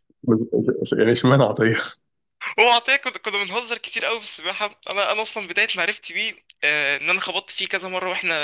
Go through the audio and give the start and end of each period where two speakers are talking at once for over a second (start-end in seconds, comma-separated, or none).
none